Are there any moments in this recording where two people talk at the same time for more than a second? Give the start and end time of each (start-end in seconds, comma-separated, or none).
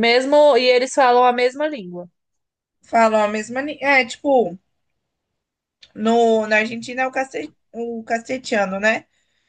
none